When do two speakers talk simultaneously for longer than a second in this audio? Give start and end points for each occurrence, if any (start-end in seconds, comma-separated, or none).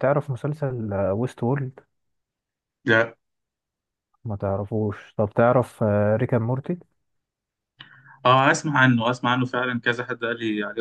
none